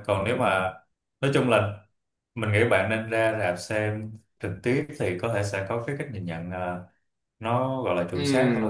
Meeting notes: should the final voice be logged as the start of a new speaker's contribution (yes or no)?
yes